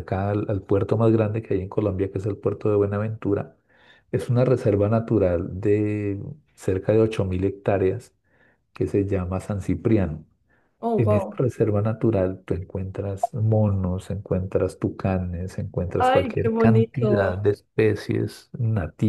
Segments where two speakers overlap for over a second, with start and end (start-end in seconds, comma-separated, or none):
16.0-17.4